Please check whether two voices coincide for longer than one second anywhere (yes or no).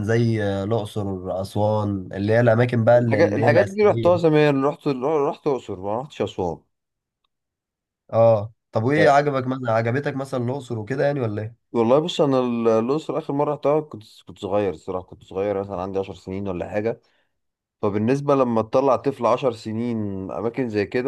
yes